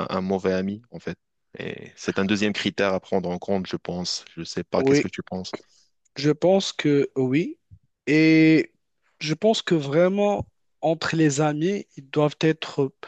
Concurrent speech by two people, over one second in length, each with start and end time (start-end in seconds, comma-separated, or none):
none